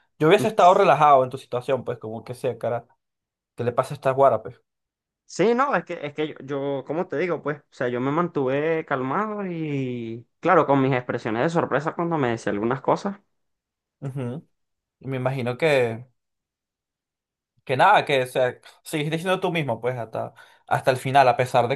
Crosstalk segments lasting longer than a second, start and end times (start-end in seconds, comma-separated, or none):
none